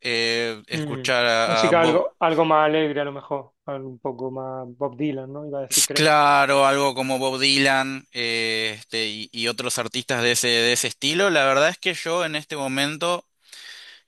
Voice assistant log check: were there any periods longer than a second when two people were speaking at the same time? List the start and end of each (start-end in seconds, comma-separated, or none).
0.7-2.1